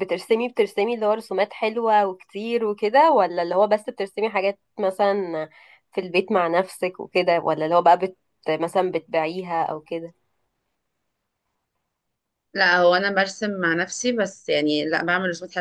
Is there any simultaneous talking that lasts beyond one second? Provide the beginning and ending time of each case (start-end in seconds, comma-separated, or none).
none